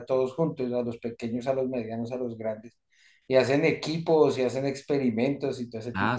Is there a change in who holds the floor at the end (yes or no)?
yes